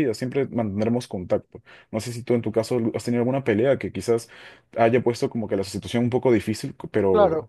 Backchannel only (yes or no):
no